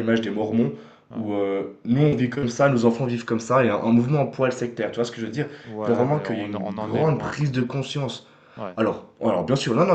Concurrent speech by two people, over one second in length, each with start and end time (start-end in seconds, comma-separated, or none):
5.6-7.7